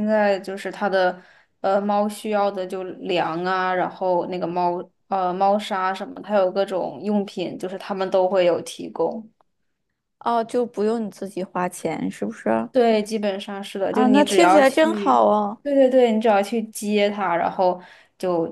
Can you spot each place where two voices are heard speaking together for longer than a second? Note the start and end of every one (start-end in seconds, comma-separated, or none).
13.9-15.1